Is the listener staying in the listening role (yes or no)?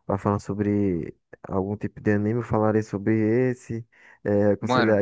yes